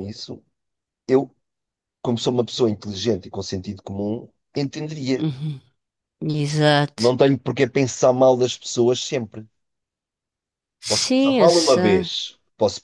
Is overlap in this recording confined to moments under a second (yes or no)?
no